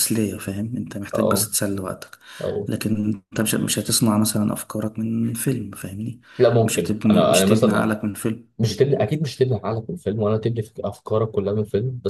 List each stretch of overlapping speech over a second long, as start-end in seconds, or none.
6.6-7.9